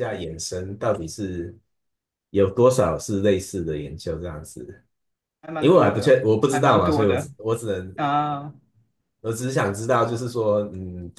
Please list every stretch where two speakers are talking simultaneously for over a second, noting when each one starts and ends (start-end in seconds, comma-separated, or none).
5.6-7.3